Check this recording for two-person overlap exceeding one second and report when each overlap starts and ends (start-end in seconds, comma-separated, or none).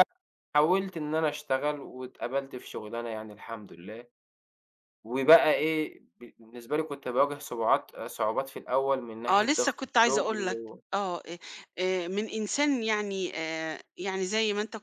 9.3-10.8